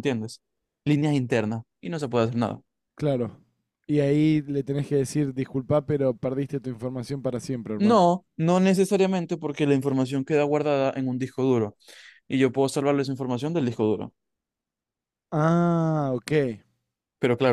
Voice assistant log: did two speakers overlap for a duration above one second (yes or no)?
no